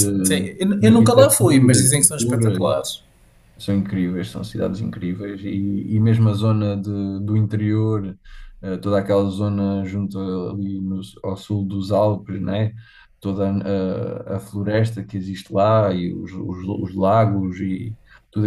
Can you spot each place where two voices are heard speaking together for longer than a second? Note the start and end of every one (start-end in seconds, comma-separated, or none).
0.6-2.6